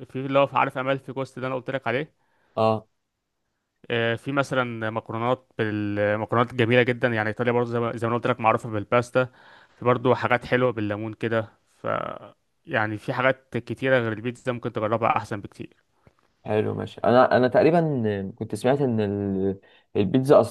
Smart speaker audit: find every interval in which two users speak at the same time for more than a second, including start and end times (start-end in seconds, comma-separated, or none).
none